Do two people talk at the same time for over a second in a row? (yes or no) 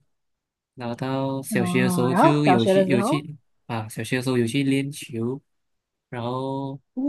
yes